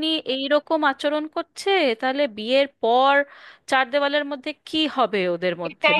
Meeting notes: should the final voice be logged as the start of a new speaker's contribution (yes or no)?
yes